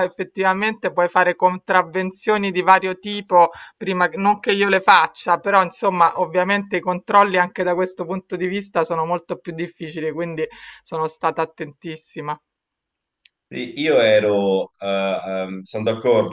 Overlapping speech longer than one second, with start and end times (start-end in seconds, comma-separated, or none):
none